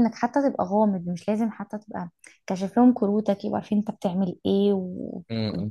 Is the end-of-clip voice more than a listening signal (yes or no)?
no